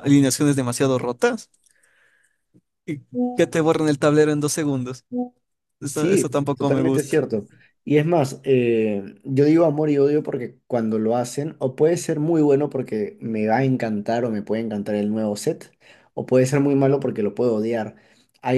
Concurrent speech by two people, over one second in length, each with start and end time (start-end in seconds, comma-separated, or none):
5.9-7.2